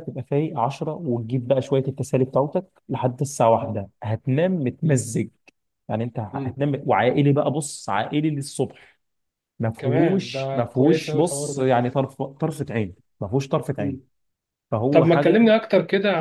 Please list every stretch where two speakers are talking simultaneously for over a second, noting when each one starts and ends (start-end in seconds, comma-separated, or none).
9.8-11.7